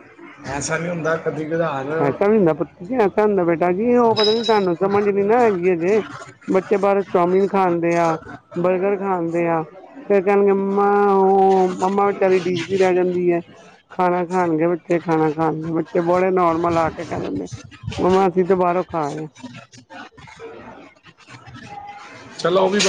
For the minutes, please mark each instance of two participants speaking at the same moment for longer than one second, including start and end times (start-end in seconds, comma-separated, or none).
none